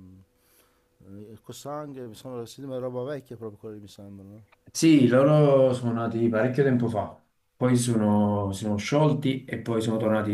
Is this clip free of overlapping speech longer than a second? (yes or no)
yes